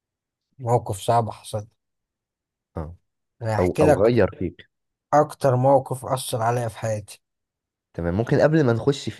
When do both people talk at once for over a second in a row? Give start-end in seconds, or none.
none